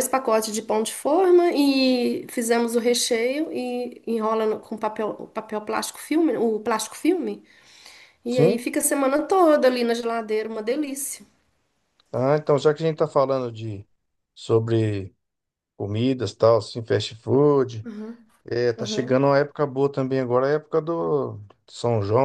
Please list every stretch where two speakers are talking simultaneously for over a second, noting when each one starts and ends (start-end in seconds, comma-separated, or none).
none